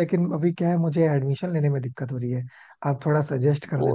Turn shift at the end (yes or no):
no